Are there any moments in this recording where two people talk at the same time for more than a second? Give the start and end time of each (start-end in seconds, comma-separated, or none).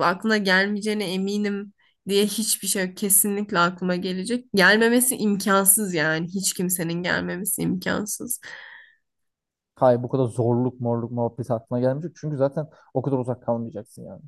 none